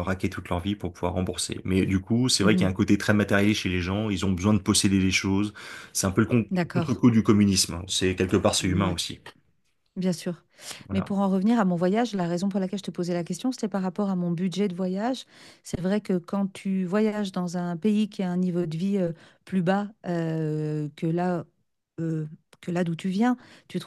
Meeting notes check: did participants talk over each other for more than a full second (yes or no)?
no